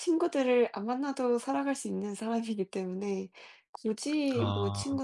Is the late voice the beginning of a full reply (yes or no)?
no